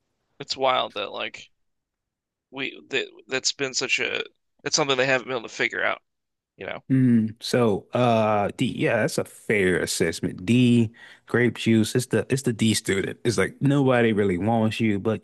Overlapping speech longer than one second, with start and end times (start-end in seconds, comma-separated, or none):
none